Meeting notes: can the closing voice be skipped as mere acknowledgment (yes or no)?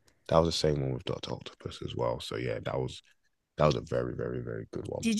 no